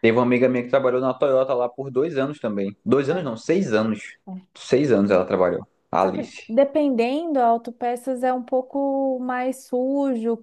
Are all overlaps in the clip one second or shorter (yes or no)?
yes